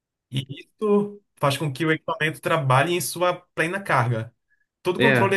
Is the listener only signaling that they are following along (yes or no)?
yes